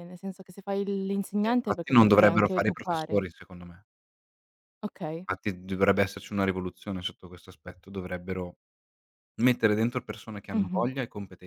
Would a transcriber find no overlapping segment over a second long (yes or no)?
no